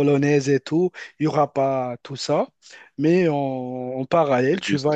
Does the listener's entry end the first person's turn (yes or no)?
no